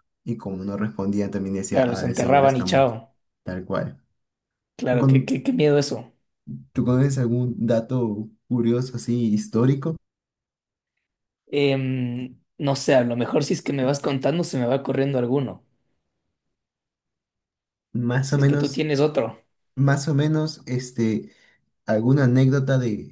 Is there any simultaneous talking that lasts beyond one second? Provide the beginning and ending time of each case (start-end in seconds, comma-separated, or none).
1.7-2.9